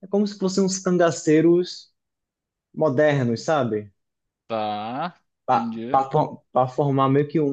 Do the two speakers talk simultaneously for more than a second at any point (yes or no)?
no